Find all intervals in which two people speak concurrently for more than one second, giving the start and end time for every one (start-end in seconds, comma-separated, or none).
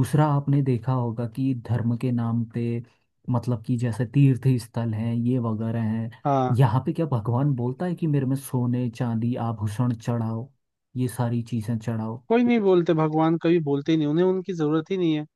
none